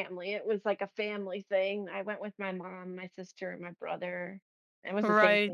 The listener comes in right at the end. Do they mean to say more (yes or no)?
no